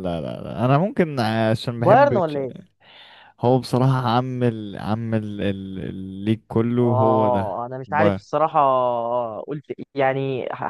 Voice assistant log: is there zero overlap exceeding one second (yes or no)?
no